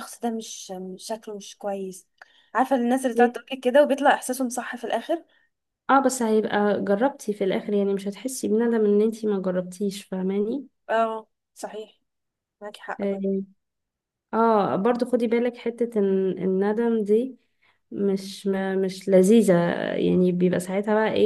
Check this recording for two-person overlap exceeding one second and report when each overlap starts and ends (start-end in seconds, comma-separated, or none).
none